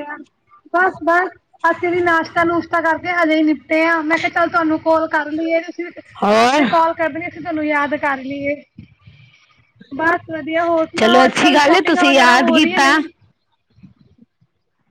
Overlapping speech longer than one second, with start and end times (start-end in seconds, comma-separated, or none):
11.0-12.8